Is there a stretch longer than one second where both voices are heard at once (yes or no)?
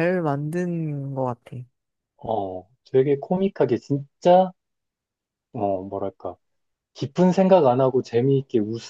no